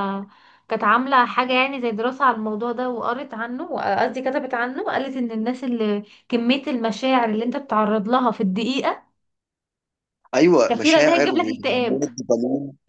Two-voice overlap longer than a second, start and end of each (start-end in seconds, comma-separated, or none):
10.7-12.0